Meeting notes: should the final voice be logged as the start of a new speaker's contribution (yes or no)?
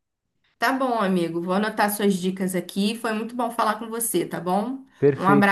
yes